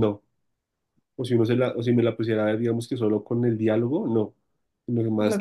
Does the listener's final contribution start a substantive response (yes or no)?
no